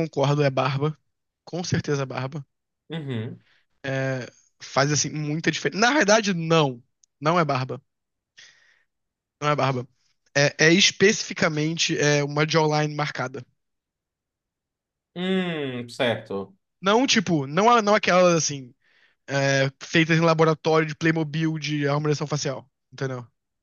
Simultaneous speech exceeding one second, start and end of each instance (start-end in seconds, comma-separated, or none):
none